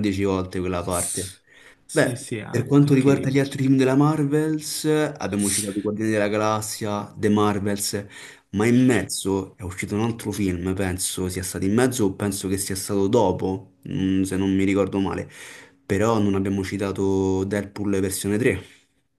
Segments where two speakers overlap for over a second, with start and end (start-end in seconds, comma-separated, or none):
1.9-3.4